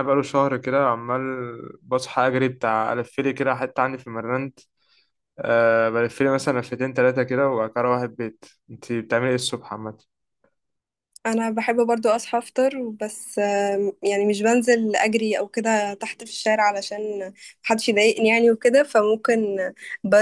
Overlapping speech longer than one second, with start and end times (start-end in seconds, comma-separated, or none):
none